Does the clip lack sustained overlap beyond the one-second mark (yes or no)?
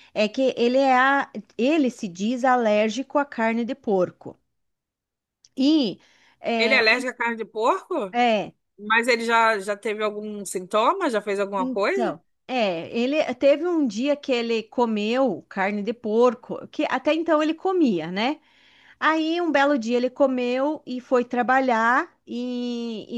yes